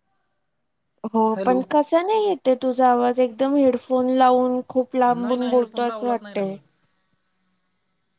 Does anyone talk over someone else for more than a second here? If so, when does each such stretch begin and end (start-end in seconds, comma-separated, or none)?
5.2-6.5